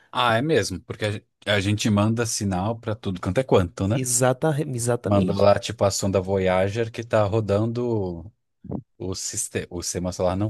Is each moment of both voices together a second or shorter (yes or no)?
yes